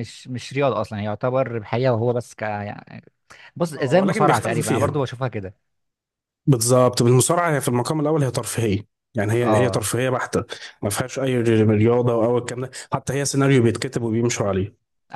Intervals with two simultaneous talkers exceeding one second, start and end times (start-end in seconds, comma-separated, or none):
3.8-5.0